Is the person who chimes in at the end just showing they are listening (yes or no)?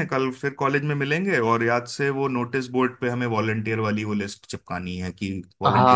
no